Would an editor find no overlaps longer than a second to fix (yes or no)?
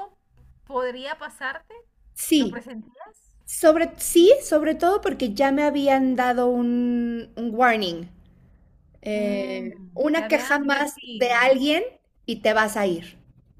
no